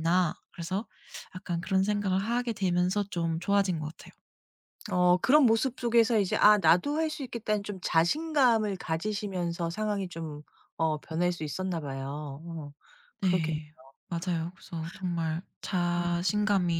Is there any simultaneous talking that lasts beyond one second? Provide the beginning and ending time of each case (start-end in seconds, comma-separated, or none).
none